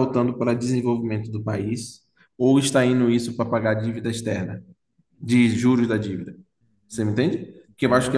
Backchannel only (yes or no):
yes